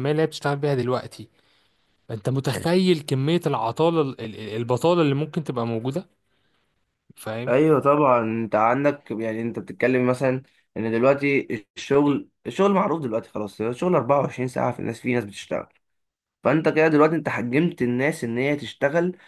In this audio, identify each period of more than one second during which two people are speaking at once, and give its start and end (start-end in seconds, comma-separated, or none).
none